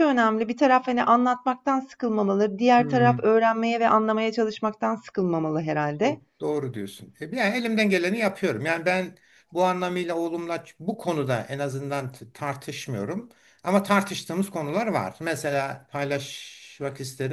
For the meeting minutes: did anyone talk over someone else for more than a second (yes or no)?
no